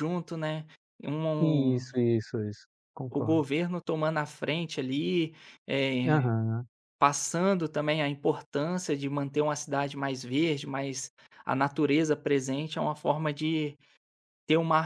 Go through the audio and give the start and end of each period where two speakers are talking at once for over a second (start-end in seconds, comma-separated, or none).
none